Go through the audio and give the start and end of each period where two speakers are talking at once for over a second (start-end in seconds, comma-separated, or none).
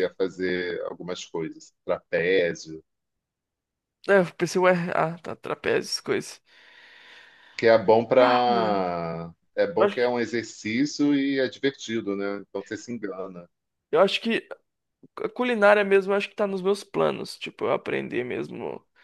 none